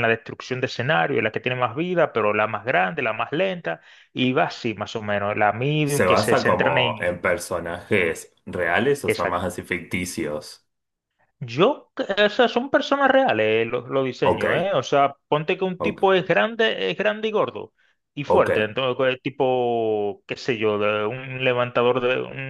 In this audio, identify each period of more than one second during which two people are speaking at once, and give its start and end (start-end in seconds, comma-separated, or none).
5.8-7.2